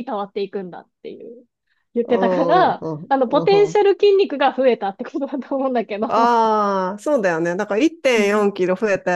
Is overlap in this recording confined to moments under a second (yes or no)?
no